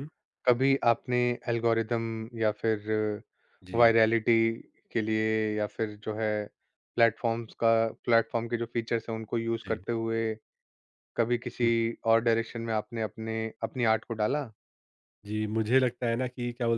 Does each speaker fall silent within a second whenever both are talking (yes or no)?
yes